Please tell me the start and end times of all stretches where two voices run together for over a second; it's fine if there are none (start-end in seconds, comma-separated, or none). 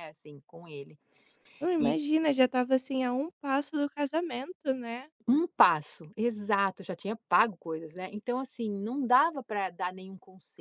none